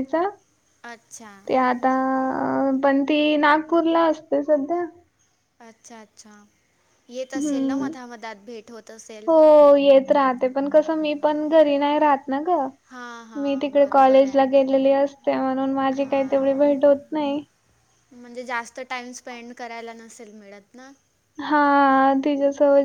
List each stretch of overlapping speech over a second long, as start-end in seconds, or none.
13.4-14.7